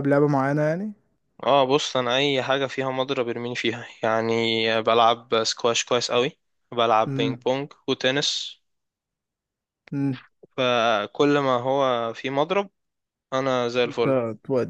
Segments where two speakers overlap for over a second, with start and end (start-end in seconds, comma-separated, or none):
none